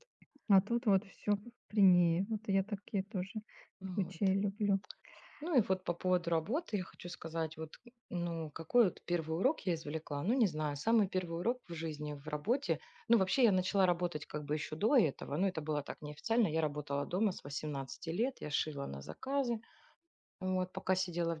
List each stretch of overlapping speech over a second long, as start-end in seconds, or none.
none